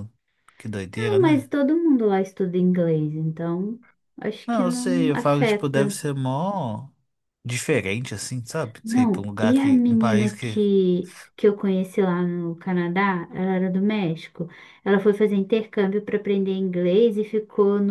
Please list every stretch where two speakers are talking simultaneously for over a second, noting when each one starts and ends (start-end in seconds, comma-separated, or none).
4.5-6.0, 8.8-10.6